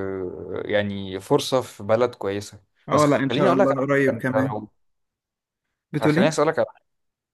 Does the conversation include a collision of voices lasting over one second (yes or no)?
yes